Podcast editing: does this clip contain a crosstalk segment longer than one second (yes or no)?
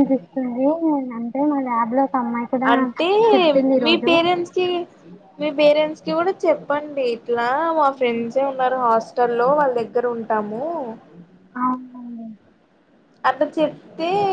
no